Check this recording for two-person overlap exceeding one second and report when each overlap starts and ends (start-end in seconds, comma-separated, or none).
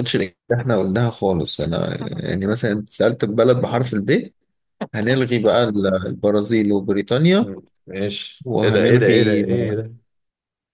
8.4-9.8